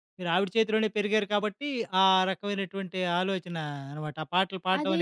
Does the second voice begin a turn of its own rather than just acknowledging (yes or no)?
yes